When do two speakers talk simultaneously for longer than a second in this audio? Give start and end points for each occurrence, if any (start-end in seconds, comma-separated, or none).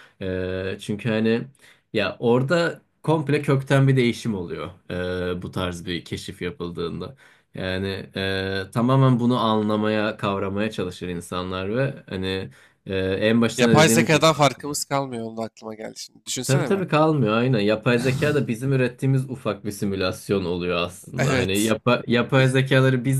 13.6-14.8